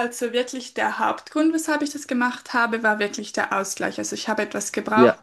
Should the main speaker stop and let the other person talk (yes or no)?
no